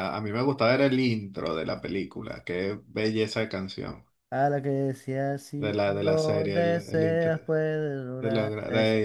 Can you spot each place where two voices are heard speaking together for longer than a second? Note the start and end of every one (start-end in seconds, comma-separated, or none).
5.6-7.3